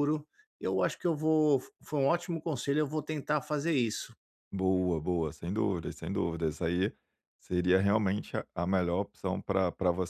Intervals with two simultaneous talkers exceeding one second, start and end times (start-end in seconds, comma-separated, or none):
none